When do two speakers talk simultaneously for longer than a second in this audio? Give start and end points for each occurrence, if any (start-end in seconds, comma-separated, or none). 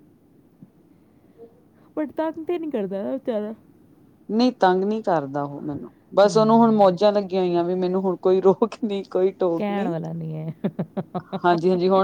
none